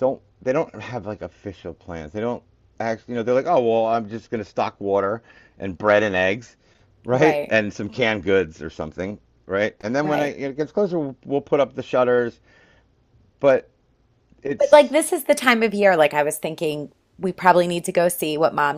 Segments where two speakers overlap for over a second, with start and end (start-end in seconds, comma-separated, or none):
none